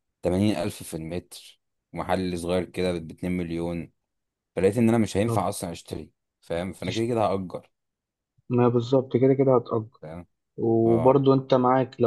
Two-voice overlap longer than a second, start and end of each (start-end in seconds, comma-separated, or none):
none